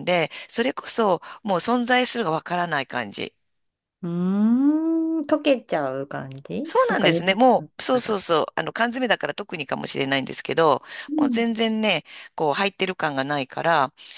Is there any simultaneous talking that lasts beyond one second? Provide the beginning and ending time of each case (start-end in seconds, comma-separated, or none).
6.7-8.2